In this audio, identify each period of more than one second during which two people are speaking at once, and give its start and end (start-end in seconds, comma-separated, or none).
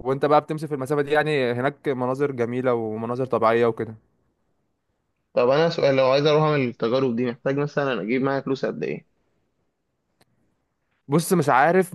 none